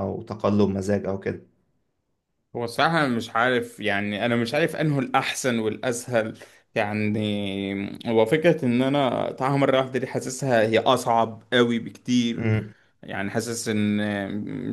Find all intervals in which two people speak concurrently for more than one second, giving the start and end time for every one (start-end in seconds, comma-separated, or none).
none